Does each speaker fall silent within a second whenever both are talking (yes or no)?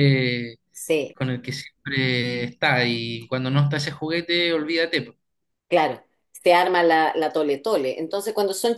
yes